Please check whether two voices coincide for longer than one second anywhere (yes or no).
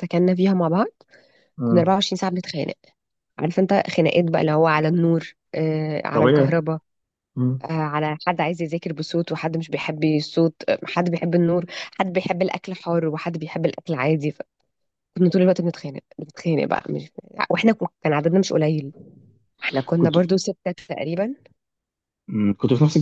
no